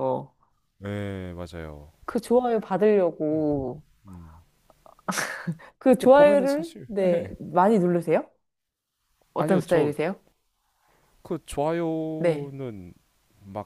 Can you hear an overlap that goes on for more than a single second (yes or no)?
yes